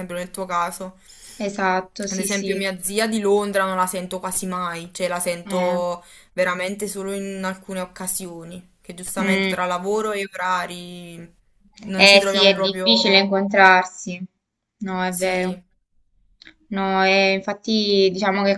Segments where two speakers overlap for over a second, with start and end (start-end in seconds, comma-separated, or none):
12.0-13.3